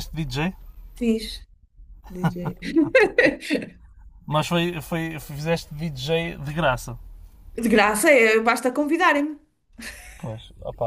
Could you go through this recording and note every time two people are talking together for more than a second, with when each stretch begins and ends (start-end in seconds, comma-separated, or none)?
none